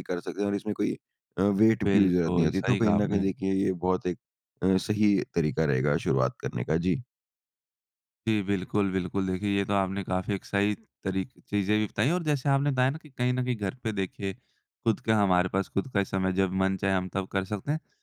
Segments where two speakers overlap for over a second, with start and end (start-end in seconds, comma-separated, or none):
1.9-3.3